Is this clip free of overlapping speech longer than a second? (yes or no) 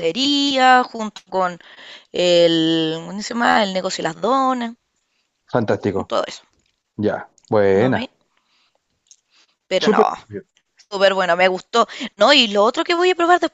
yes